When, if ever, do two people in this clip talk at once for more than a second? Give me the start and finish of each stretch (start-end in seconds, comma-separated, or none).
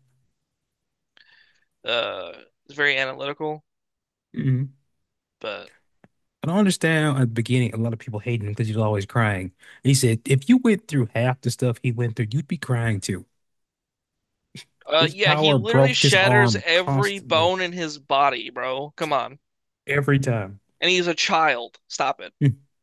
15.0-17.5